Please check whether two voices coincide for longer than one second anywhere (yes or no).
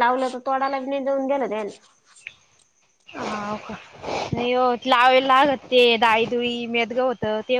no